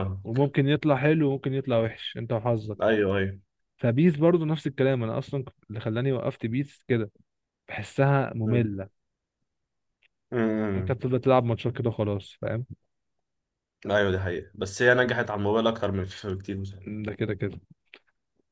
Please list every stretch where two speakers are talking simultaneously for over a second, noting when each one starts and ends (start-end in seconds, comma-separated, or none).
none